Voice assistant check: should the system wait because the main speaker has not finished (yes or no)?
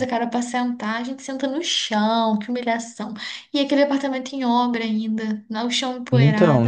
no